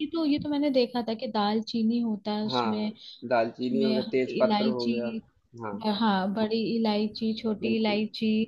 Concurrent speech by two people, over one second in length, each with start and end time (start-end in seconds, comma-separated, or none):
3.6-5.1